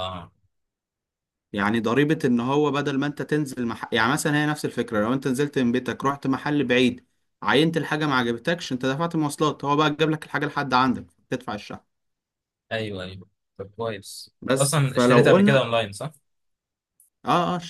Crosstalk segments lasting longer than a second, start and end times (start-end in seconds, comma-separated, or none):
14.4-15.7